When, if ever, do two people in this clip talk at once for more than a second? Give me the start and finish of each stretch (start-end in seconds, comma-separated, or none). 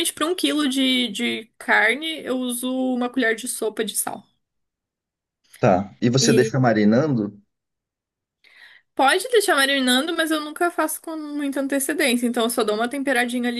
none